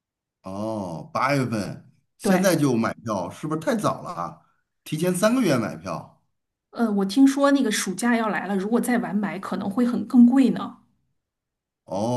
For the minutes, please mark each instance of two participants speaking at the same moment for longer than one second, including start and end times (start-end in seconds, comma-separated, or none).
none